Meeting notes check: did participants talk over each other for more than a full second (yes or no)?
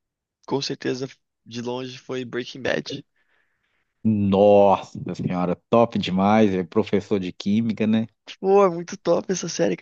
no